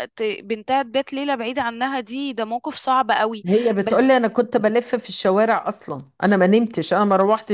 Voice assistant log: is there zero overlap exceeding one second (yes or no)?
yes